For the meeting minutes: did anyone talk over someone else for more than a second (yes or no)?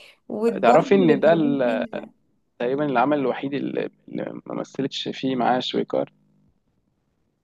yes